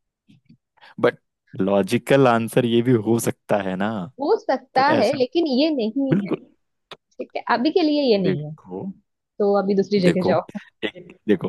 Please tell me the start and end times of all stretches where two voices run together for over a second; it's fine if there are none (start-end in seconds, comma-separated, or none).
none